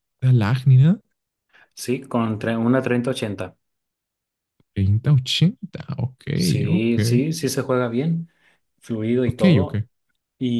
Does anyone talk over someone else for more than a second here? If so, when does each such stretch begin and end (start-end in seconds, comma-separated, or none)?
none